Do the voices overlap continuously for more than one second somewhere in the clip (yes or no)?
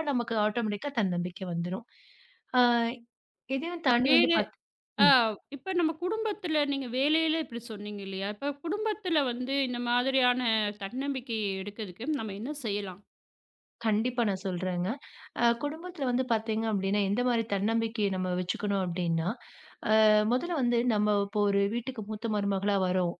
no